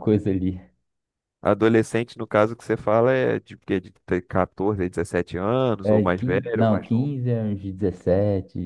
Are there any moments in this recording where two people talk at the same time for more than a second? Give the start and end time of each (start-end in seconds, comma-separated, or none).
5.8-7.1